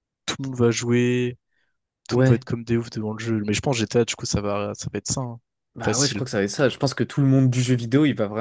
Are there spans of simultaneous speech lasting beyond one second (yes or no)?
no